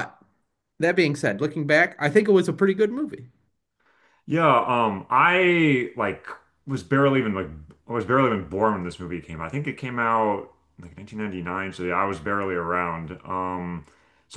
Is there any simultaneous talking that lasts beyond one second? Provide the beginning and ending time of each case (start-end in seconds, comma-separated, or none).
none